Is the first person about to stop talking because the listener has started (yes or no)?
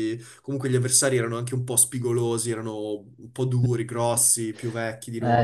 yes